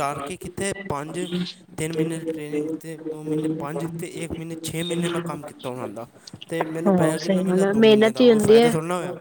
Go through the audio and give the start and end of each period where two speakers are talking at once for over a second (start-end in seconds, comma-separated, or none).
6.8-8.7